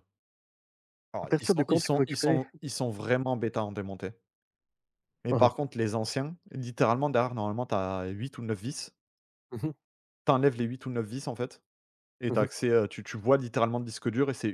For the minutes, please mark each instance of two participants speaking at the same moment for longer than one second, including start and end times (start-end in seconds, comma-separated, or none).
1.2-2.4